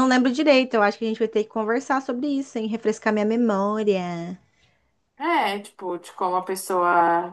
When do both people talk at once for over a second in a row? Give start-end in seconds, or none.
none